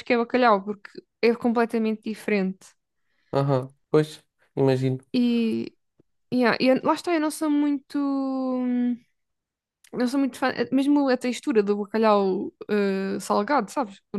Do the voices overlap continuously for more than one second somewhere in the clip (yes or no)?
no